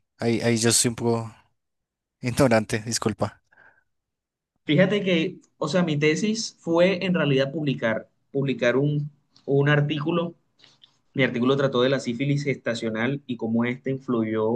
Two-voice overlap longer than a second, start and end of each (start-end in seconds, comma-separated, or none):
none